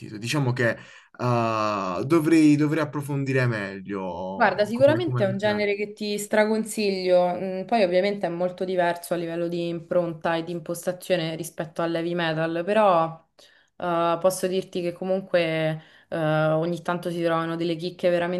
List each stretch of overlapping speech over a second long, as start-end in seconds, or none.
4.4-5.6